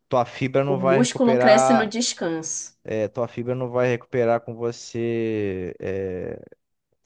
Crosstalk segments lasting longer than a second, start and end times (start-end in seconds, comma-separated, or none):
0.7-1.9